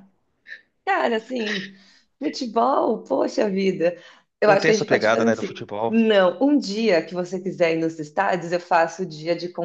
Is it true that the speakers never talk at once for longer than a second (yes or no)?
no